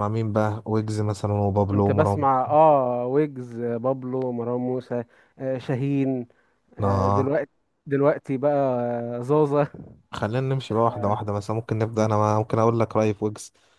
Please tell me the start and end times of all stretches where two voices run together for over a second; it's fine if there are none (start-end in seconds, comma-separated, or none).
none